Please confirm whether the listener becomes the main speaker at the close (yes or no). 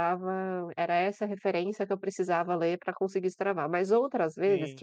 no